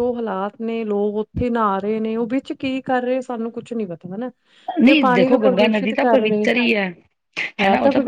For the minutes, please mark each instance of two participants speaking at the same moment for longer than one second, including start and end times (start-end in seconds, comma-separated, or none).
4.8-6.5